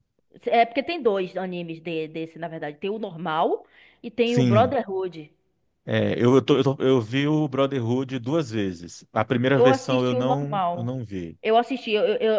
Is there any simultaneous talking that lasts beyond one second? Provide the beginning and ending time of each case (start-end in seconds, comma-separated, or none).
9.5-10.9